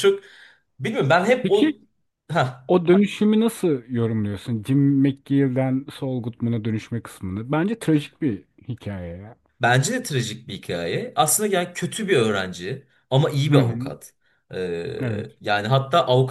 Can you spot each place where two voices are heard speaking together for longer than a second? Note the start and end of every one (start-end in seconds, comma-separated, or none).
none